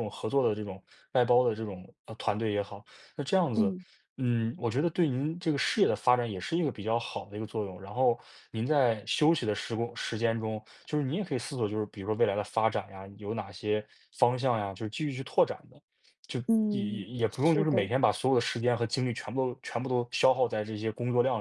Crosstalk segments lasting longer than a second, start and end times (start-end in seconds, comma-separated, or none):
16.5-17.9